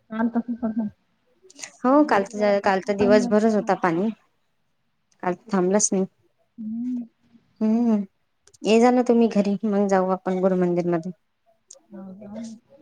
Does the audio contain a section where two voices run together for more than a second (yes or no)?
yes